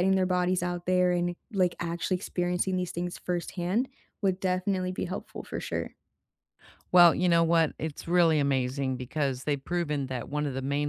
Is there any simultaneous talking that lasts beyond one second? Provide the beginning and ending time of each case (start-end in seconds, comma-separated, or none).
none